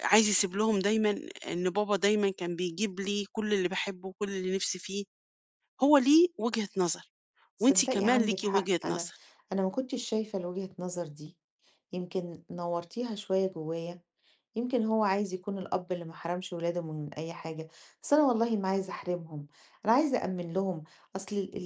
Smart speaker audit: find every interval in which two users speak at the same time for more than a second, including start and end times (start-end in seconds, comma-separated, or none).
7.6-9.1